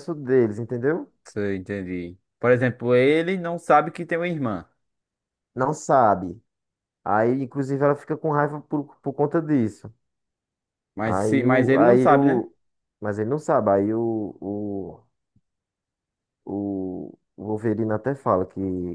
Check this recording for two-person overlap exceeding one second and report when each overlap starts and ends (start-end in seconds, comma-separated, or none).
11.0-12.4